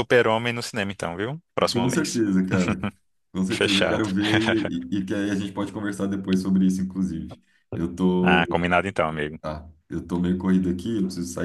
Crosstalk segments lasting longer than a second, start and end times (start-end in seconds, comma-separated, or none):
none